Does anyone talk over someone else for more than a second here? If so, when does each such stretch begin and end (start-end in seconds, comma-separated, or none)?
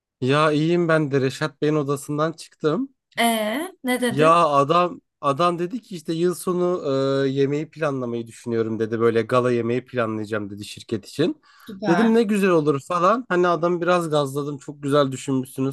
none